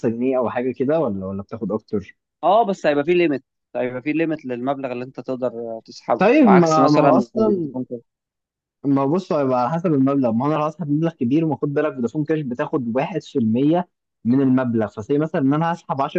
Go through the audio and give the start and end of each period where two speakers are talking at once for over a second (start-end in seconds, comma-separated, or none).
6.2-7.8